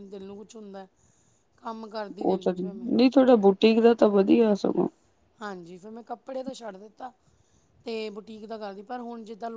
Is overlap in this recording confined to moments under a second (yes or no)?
yes